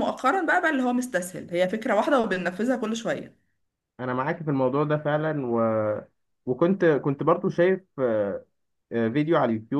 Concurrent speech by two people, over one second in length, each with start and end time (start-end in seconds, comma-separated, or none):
none